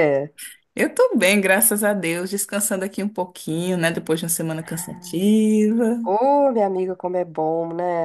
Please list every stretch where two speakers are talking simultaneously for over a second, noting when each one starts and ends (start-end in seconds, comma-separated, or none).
none